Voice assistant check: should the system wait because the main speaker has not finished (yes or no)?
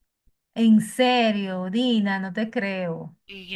no